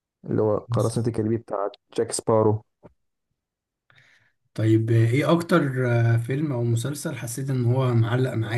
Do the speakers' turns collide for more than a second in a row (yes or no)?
no